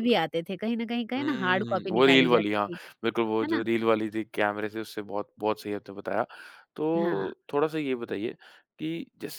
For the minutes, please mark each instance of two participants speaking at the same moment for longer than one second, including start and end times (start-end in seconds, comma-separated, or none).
1.2-2.8